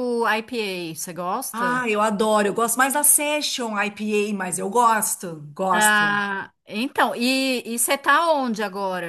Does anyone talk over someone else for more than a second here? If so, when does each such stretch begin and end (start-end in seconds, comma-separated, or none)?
none